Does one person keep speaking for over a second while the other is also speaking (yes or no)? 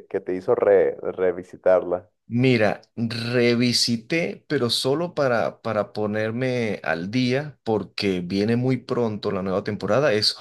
no